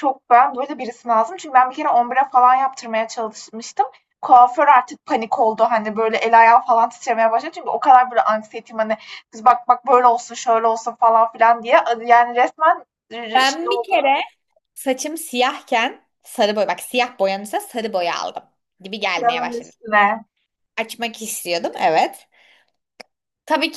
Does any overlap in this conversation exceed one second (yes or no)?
no